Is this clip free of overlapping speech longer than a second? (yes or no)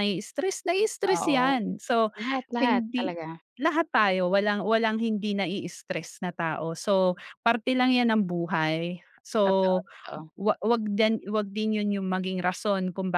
yes